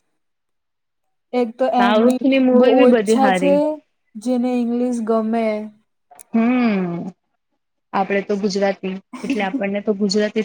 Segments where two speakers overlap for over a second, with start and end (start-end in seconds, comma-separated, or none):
1.8-3.5